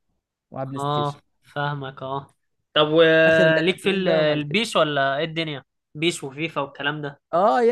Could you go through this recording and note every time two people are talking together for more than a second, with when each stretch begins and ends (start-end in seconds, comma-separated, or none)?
3.3-4.6